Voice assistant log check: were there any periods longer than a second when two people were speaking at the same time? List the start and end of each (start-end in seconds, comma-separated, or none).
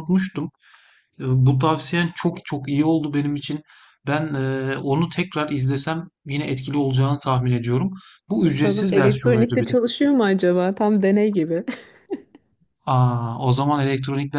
8.4-9.8